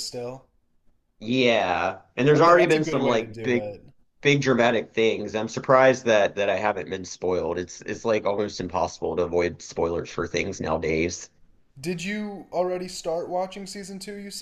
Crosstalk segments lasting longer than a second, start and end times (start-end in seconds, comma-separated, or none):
2.3-3.6